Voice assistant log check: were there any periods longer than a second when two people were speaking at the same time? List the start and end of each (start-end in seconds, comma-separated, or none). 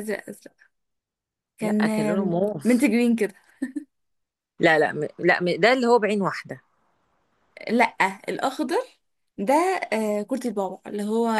1.6-2.9